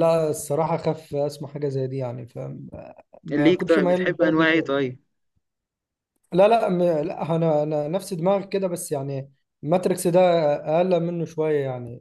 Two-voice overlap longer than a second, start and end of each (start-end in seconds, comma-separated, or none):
3.3-4.9